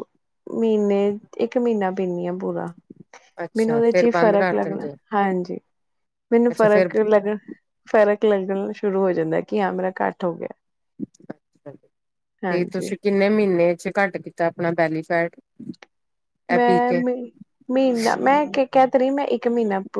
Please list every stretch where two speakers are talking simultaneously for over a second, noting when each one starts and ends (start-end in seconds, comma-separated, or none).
3.6-4.9